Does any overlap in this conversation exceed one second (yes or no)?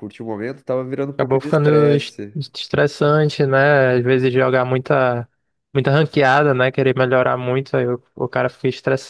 yes